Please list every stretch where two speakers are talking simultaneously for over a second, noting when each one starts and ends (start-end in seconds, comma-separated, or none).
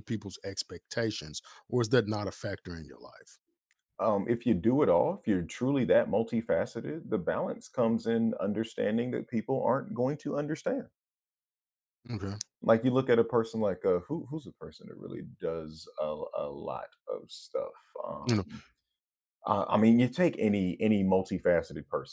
none